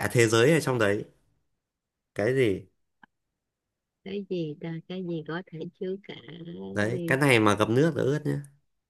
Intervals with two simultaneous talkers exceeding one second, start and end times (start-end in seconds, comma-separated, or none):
none